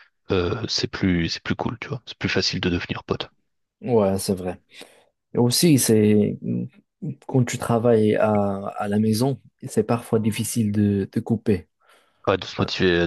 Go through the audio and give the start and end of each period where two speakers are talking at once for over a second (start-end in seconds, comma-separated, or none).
none